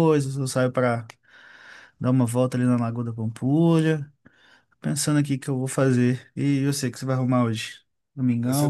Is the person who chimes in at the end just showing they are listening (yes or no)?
no